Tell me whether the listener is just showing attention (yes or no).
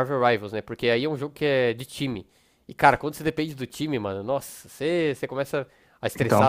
yes